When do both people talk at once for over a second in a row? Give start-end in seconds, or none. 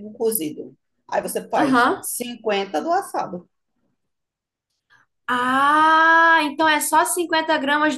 none